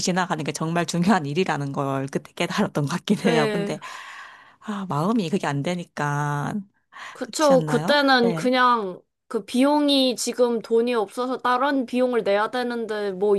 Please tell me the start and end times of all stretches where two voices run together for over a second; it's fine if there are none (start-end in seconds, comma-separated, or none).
7.2-8.5